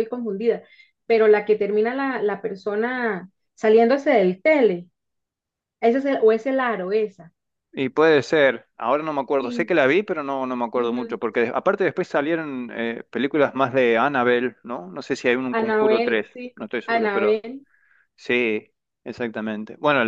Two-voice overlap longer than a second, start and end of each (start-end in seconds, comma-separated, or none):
15.5-17.4